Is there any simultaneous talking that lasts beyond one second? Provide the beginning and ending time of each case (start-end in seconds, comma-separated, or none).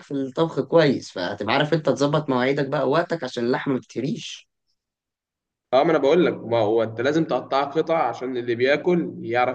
none